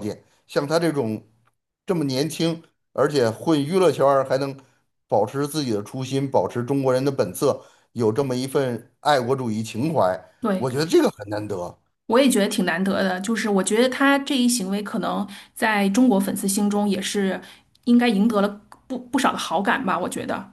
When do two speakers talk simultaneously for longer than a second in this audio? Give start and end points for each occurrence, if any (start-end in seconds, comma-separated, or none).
none